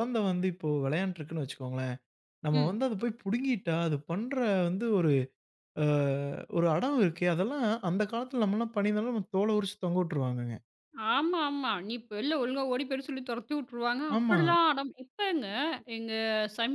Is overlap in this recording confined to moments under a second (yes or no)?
yes